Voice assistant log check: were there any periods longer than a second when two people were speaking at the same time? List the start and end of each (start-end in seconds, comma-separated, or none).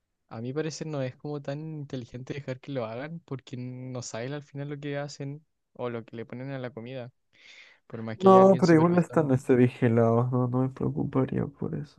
8.2-9.4